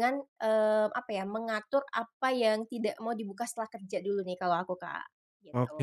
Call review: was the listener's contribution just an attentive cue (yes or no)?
no